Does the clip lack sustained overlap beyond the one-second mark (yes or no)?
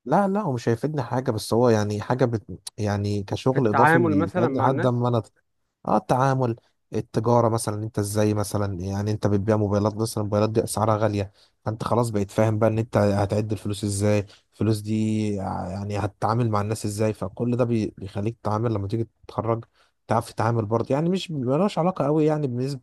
no